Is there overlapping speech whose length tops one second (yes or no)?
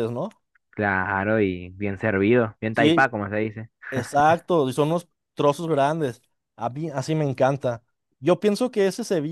no